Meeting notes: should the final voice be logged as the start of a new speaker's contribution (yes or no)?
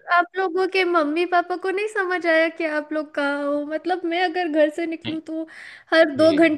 no